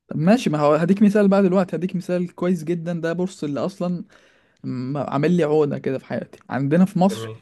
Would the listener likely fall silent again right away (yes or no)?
yes